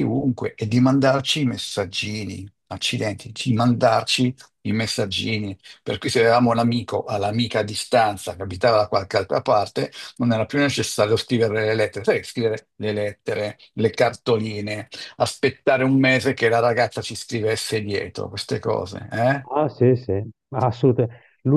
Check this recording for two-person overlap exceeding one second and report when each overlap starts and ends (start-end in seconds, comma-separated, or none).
none